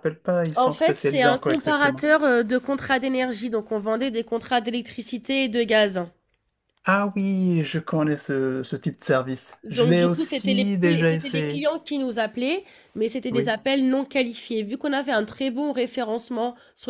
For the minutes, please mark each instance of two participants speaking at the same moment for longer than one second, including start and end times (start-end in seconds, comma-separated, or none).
0.6-2.1, 9.6-11.7